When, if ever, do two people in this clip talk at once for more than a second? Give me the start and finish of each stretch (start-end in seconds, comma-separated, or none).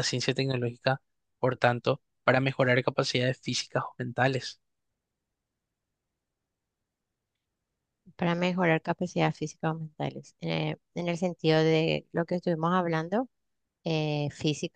none